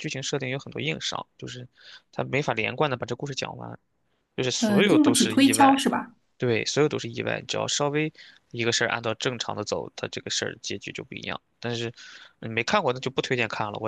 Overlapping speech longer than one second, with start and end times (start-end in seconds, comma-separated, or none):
4.6-5.8